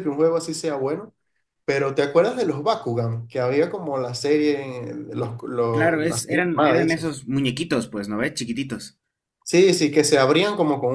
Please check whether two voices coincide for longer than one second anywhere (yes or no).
yes